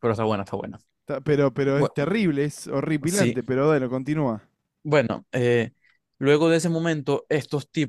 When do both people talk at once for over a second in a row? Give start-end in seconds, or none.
none